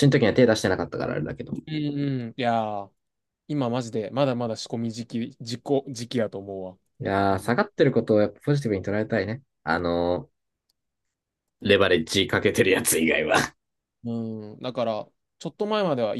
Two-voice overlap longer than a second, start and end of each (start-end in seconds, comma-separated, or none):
none